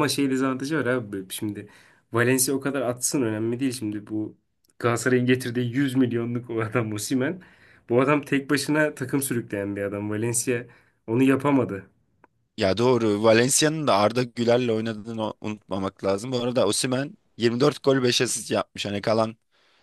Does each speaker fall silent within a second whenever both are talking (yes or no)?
yes